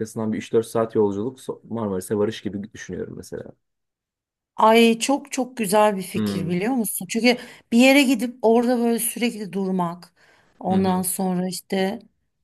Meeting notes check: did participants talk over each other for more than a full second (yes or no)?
no